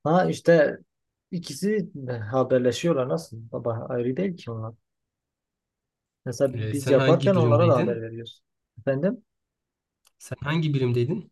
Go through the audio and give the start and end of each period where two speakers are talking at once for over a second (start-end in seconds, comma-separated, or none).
6.5-8.0